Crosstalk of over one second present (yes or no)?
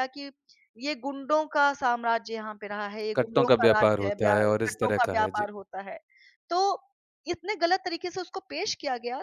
yes